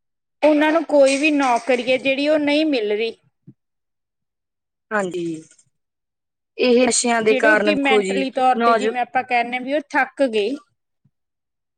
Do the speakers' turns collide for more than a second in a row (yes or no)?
yes